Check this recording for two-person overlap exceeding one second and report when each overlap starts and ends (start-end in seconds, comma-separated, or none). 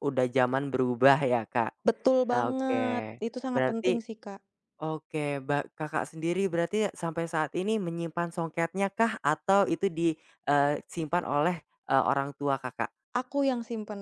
2.3-4.0